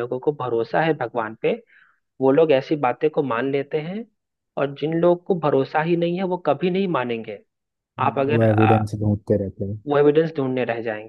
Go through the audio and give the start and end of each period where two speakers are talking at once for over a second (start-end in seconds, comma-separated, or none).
none